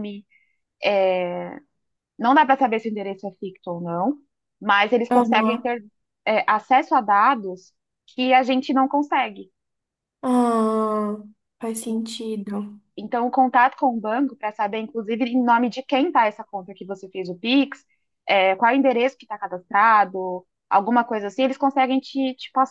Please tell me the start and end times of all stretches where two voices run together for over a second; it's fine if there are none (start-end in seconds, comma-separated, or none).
none